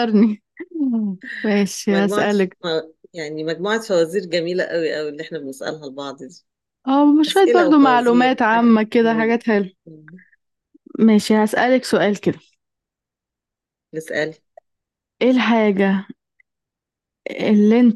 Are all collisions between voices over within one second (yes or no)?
no